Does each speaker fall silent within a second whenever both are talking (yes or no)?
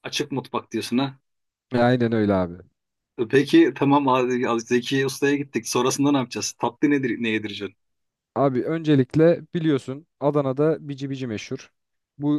yes